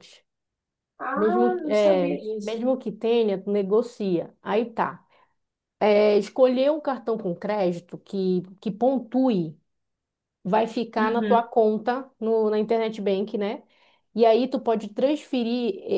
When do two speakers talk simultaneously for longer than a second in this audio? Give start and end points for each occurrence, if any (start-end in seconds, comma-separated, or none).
1.1-2.7